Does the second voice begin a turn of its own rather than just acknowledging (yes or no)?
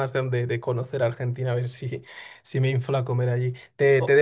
no